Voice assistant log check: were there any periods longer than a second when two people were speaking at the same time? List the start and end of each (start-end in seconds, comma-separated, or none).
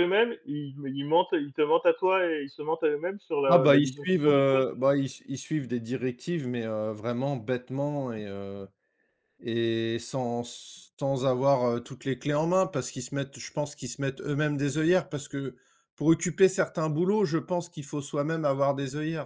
3.5-4.7